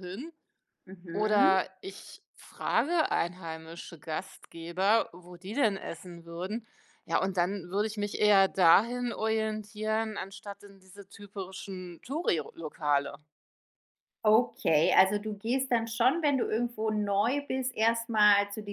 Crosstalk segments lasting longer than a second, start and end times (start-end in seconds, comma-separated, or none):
none